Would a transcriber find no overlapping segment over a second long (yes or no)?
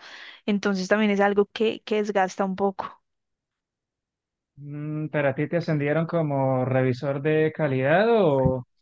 yes